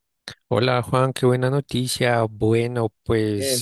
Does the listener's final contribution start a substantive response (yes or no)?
no